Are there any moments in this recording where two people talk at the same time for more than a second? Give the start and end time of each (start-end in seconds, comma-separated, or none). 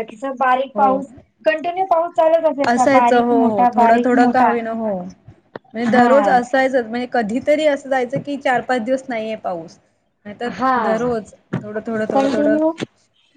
2.7-4.5